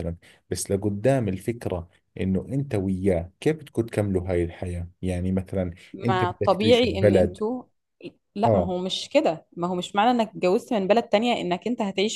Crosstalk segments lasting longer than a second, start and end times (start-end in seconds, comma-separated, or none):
5.9-7.4